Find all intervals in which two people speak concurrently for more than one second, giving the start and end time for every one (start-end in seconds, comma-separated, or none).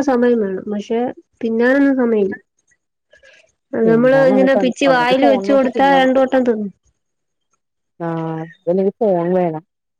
3.9-6.0